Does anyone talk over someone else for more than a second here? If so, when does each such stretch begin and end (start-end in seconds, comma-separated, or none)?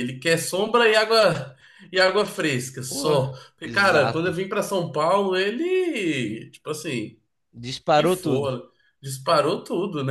2.9-4.3